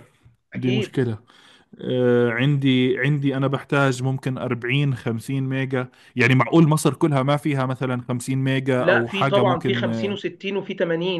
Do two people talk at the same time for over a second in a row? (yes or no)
yes